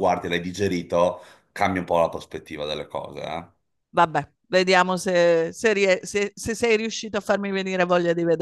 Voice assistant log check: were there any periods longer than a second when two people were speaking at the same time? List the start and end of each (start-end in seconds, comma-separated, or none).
none